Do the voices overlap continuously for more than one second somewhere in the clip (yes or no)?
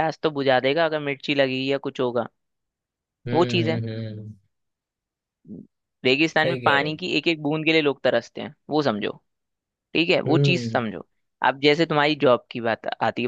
no